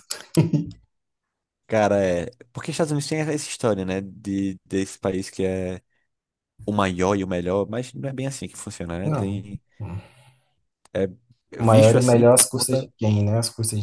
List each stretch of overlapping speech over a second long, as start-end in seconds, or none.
11.6-12.9